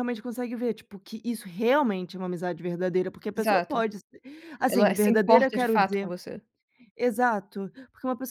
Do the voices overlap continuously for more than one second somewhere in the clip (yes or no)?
yes